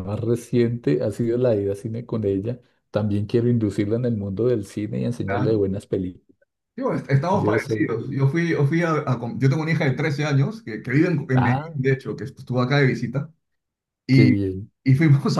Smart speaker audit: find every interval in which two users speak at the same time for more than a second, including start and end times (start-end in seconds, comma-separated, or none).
none